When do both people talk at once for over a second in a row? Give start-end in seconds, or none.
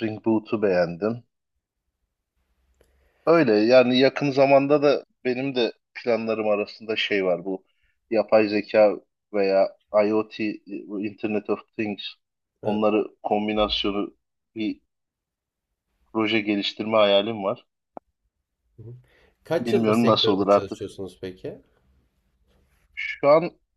19.6-20.9